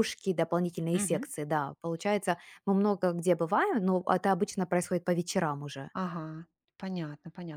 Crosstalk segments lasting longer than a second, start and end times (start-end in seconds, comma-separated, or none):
none